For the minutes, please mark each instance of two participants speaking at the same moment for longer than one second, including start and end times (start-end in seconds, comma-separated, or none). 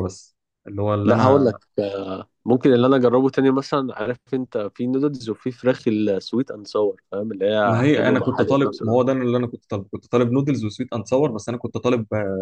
7.7-9.1